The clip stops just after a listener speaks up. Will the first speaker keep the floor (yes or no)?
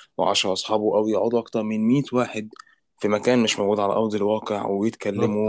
no